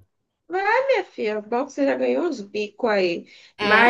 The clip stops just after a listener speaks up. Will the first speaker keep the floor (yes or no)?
yes